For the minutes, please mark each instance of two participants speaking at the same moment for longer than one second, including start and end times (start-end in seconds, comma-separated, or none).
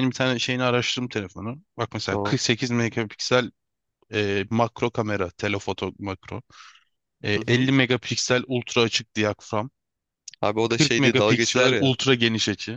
10.7-11.9